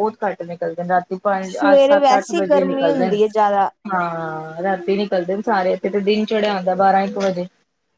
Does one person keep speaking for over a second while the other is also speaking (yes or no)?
yes